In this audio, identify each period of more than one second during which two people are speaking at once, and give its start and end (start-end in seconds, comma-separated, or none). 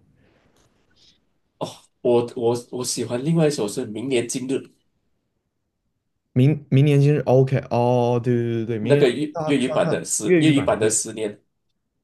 8.8-10.9